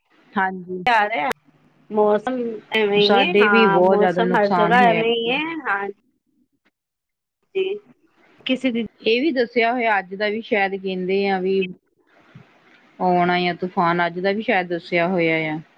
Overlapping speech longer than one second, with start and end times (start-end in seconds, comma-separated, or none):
3.0-5.0